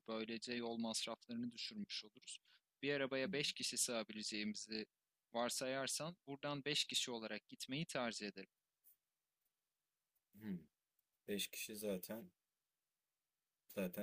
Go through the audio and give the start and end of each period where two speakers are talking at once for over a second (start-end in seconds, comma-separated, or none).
none